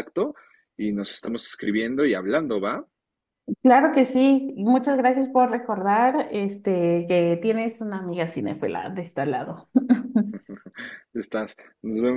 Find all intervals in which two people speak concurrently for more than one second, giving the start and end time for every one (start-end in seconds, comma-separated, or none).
none